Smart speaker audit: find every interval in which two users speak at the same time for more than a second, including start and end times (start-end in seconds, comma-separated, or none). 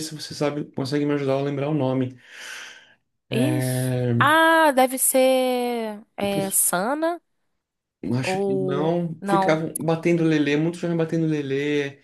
8.2-9.6